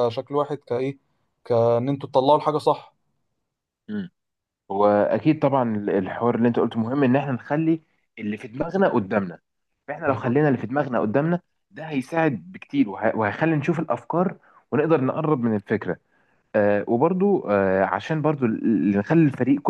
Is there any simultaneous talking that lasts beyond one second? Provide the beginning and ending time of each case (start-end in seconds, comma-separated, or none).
none